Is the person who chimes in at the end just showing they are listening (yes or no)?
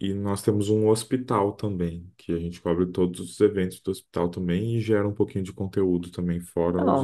no